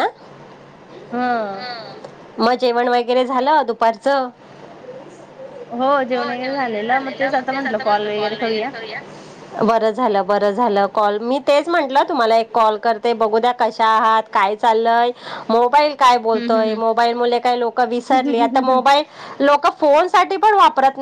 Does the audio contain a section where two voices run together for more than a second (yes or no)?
no